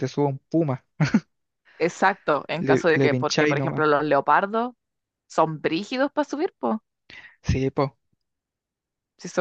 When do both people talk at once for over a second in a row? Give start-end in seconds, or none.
2.6-3.9